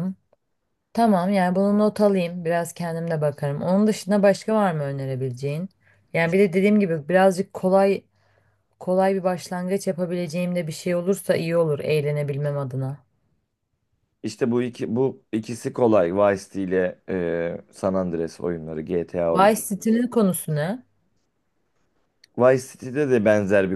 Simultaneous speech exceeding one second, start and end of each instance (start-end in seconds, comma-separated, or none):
none